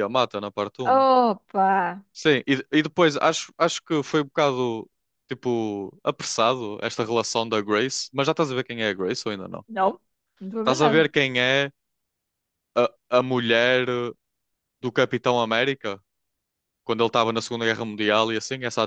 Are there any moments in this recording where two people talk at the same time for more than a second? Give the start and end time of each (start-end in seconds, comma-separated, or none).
none